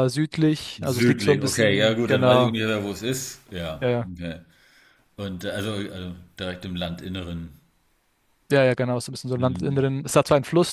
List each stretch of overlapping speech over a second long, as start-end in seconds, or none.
0.8-2.6